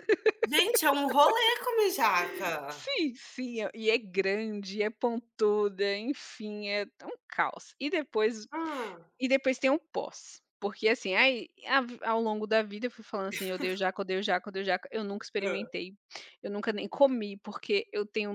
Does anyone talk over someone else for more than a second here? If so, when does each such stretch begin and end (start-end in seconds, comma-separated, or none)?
none